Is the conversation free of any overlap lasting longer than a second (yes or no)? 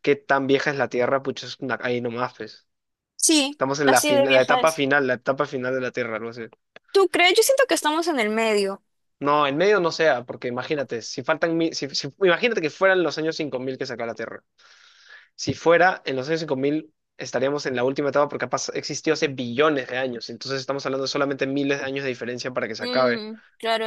no